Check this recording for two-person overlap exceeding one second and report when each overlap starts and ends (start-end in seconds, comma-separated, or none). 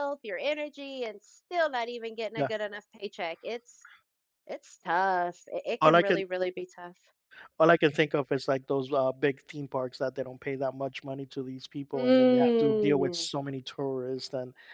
11.9-13.3